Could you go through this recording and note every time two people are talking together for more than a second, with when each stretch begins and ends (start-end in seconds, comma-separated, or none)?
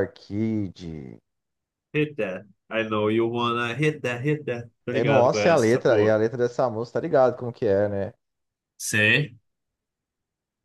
4.9-6.1